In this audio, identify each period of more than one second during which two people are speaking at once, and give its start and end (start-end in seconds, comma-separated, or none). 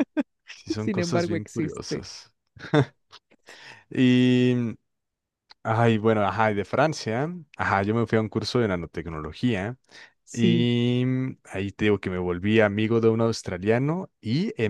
0.8-2.0